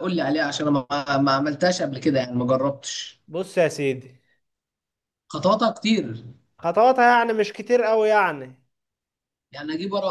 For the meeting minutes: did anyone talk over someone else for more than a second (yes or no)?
no